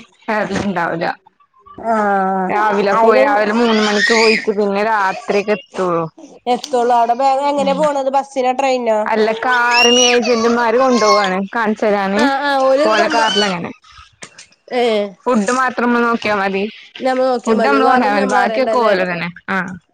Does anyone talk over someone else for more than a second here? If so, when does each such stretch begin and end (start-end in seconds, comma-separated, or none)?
17.4-18.9